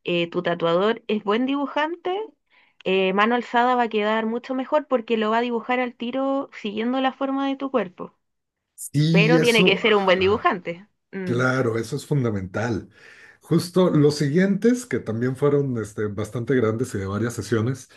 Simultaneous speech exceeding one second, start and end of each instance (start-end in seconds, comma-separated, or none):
9.1-10.5